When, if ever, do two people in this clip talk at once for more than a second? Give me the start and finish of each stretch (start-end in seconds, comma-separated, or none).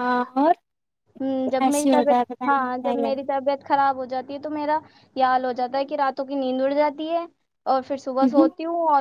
1.6-3.3